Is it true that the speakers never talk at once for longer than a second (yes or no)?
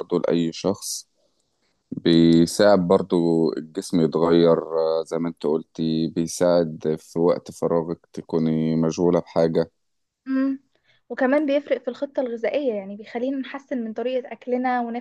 yes